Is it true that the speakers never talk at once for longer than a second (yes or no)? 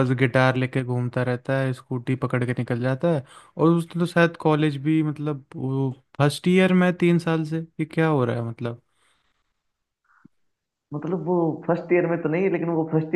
yes